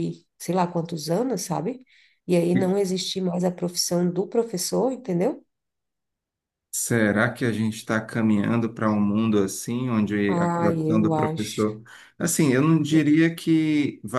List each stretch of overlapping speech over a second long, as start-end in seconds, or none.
10.3-11.7